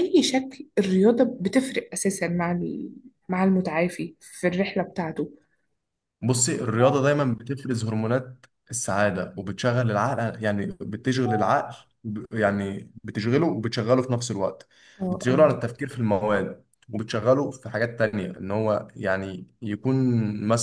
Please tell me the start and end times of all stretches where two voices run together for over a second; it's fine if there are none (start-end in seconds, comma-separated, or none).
none